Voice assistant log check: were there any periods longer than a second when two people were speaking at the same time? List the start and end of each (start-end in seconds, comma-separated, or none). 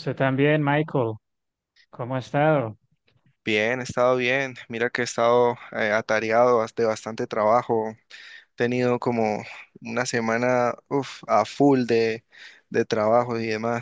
none